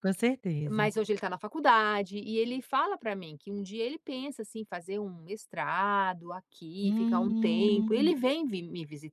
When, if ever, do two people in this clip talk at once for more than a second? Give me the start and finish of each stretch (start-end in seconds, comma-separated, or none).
6.8-8.1